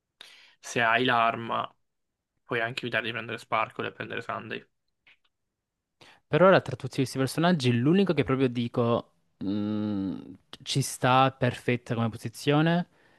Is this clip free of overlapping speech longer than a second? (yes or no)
yes